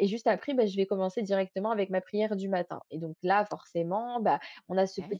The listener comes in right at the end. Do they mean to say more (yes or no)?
no